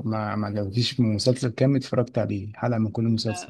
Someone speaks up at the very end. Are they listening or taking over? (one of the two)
taking over